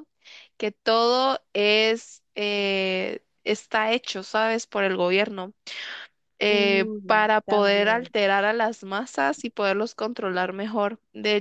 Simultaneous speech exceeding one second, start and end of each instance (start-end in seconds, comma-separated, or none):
6.5-8.1